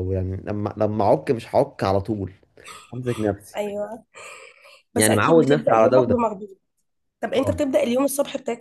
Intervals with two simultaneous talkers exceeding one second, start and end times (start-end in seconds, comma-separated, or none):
5.0-6.2